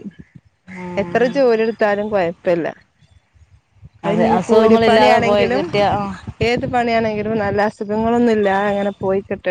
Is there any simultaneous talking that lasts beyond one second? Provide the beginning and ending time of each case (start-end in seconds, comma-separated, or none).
4.1-5.6